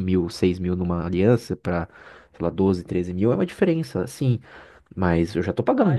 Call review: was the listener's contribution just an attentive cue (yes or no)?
no